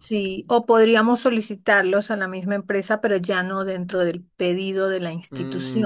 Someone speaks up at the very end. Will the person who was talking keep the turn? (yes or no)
no